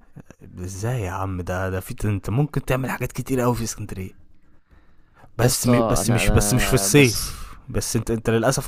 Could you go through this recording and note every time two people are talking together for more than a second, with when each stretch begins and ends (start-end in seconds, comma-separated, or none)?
5.4-7.4